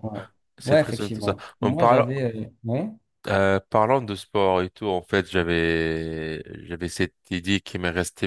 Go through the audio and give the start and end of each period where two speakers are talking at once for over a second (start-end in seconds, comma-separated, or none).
0.6-2.1